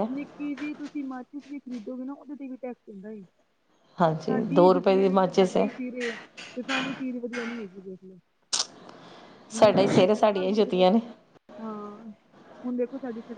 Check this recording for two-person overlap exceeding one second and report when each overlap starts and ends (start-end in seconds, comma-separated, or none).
4.3-5.7, 9.6-10.8